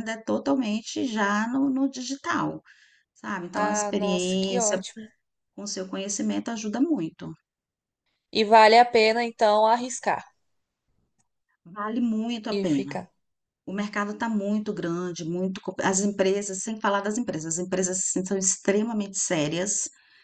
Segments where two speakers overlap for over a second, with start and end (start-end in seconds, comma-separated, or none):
3.5-4.8